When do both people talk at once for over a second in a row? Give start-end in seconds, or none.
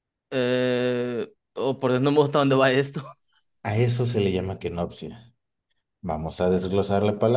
none